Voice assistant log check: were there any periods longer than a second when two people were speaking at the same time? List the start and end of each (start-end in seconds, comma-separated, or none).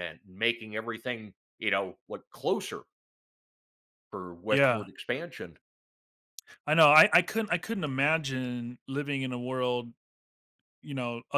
none